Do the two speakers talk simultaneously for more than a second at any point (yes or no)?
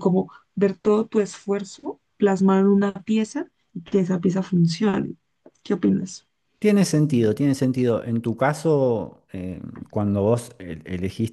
no